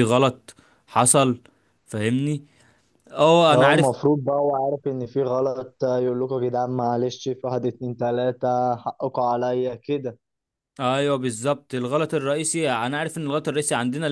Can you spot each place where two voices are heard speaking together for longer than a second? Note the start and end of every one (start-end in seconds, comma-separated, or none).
none